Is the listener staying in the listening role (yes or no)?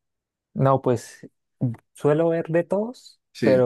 yes